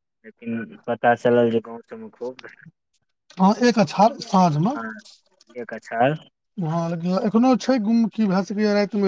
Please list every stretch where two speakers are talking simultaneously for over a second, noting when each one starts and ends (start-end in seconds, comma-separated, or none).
none